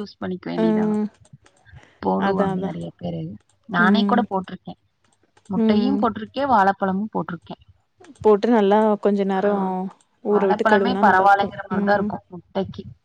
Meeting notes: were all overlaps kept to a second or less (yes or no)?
no